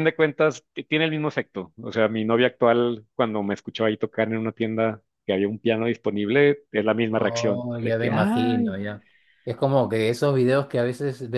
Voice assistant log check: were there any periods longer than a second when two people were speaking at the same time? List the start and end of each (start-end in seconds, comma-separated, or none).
7.1-8.8